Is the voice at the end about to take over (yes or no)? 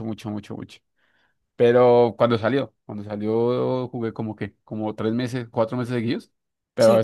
no